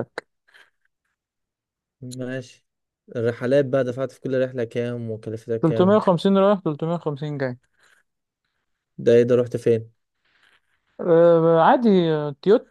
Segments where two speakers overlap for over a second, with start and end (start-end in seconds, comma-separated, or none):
none